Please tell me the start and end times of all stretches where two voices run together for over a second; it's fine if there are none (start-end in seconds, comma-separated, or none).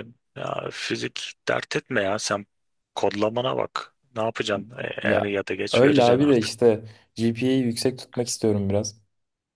5.0-6.5